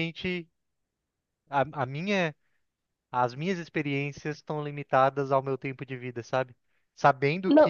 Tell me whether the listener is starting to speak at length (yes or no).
no